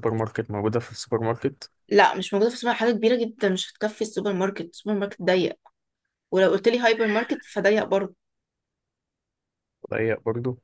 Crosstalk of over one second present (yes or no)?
no